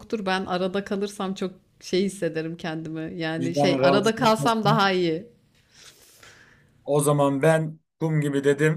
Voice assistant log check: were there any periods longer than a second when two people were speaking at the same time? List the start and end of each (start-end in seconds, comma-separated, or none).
3.4-4.8